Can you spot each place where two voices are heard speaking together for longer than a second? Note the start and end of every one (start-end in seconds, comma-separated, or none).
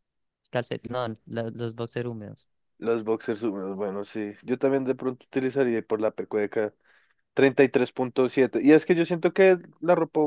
none